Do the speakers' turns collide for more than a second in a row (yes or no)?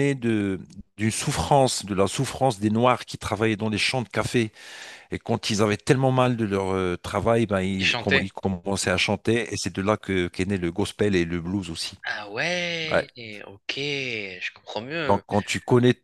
no